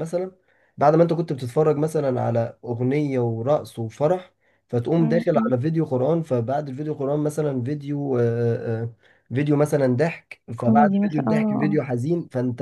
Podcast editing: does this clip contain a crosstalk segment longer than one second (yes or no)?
yes